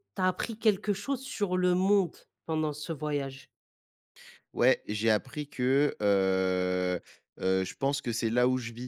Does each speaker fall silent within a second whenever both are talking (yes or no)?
yes